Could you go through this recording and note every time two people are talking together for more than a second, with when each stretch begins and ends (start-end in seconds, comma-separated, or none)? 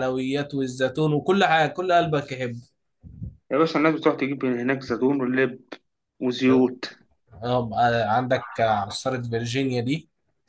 none